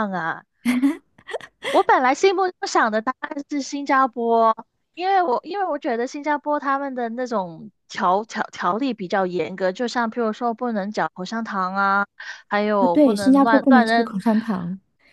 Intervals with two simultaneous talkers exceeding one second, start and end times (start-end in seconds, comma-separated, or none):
12.8-14.1